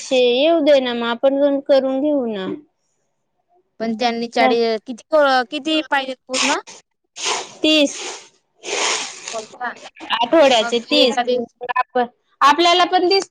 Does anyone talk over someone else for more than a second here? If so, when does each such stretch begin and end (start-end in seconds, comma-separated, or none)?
none